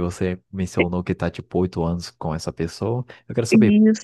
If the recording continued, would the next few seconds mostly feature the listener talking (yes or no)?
no